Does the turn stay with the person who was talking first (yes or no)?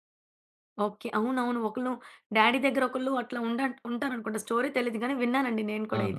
no